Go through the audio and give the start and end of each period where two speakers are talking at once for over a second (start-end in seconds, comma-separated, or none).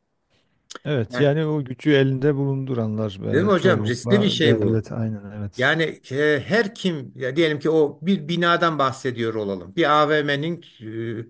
3.3-4.9